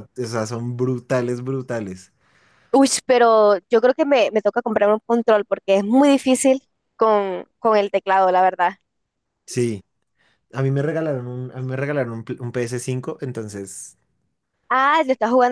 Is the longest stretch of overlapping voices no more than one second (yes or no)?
yes